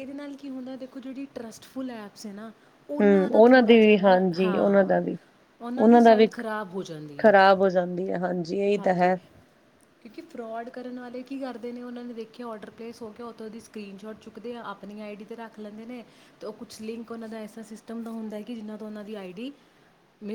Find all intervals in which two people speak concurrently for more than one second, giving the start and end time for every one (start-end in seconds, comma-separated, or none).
3.3-5.0